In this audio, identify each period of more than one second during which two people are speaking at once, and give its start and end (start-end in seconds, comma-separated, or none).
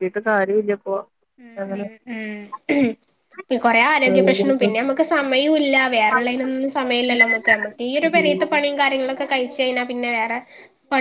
none